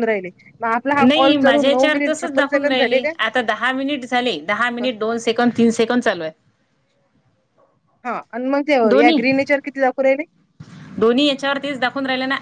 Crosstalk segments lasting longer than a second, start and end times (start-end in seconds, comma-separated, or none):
1.0-3.1